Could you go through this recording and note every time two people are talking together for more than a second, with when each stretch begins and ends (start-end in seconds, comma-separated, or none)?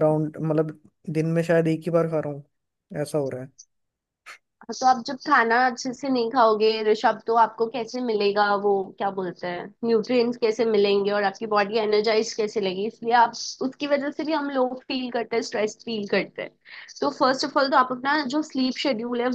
none